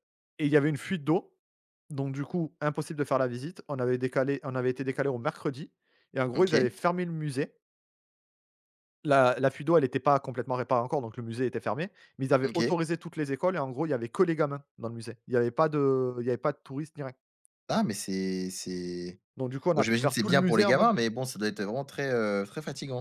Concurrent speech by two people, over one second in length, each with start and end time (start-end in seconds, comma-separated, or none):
19.7-20.9